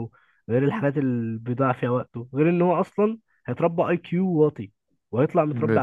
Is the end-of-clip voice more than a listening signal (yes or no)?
no